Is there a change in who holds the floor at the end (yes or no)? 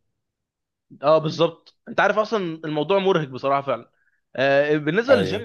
no